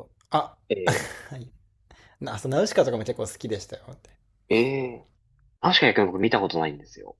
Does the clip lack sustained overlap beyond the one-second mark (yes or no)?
yes